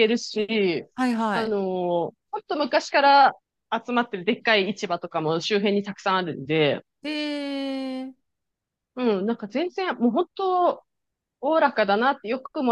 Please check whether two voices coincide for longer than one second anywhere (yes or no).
no